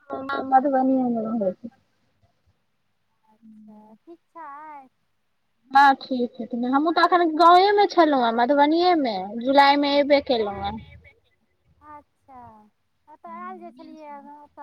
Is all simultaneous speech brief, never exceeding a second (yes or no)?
yes